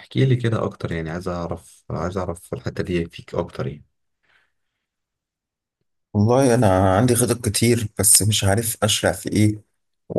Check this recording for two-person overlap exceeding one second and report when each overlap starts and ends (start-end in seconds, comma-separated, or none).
none